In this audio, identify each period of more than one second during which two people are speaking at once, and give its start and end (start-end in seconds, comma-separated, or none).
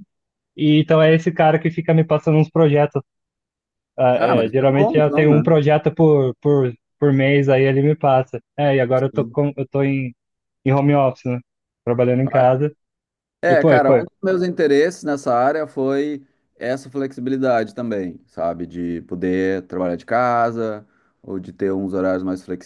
4.2-5.5